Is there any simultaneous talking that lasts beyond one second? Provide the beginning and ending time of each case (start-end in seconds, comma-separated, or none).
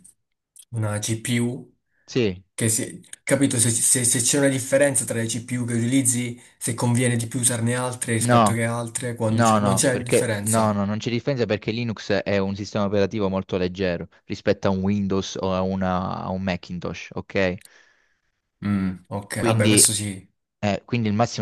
9.3-10.8